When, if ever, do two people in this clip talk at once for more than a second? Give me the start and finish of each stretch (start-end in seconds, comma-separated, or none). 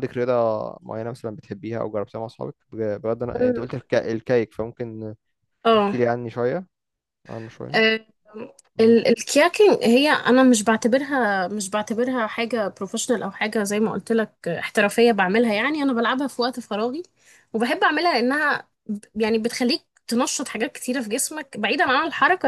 none